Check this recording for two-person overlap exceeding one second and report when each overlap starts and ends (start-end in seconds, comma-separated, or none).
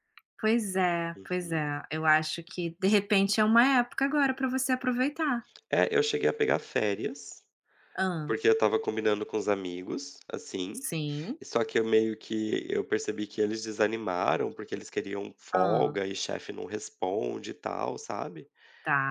none